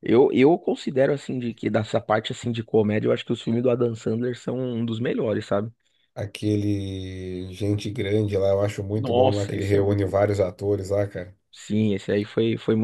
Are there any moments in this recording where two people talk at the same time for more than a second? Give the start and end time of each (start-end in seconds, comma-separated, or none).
8.9-10.2